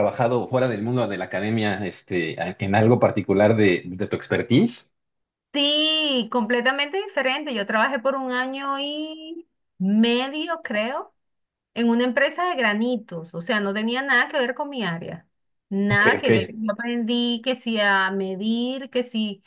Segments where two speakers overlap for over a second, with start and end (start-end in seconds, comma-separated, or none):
none